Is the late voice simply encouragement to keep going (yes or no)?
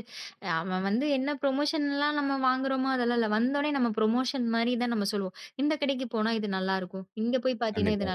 yes